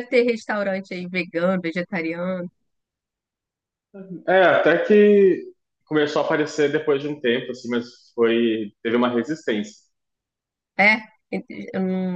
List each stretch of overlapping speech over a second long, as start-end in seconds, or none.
none